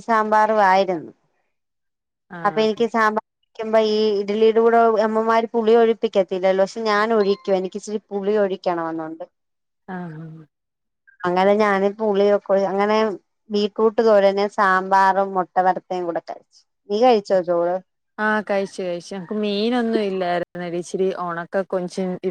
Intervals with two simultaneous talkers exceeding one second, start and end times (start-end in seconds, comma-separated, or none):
none